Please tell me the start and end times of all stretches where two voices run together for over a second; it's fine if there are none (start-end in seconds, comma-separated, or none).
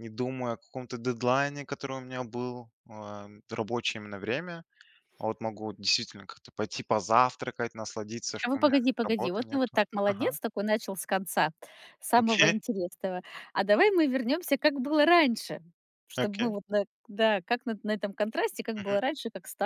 8.4-10.4